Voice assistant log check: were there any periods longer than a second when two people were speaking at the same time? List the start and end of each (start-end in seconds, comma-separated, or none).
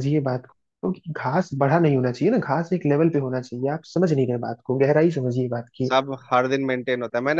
none